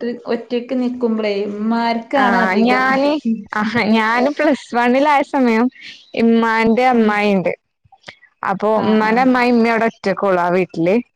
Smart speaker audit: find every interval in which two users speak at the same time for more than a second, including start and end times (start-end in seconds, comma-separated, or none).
none